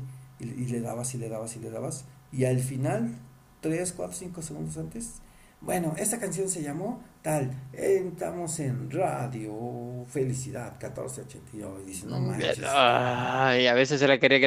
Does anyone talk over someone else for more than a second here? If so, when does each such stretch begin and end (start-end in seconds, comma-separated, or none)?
none